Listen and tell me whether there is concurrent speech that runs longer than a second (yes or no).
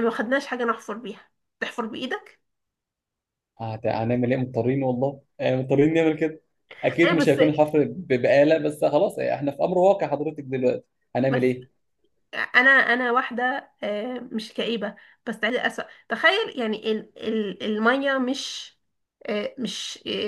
no